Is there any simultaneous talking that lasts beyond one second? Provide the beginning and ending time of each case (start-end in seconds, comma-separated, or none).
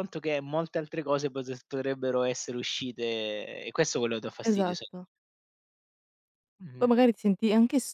none